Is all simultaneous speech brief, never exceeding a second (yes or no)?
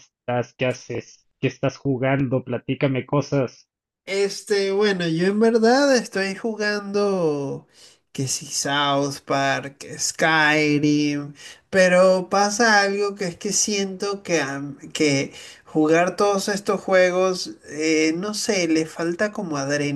yes